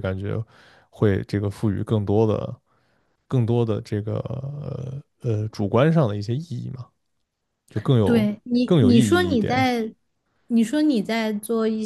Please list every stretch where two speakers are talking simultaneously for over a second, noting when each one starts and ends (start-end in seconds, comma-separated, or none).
8.0-9.7